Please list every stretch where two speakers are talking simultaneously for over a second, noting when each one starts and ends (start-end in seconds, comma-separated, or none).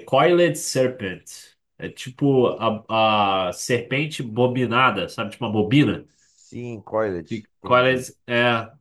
none